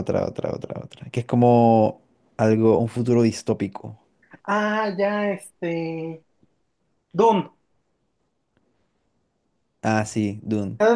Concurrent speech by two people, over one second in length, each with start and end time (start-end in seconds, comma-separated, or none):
none